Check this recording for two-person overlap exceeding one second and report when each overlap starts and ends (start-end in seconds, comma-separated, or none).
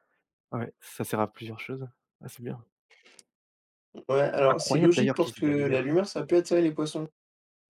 4.5-5.9